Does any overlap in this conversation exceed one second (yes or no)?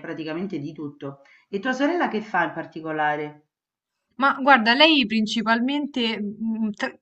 no